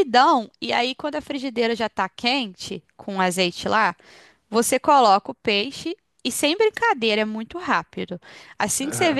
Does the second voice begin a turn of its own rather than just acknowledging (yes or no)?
no